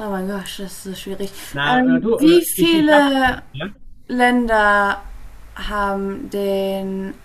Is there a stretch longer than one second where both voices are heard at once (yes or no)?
yes